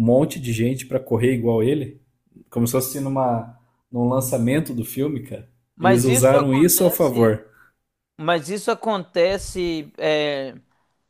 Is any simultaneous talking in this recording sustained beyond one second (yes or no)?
yes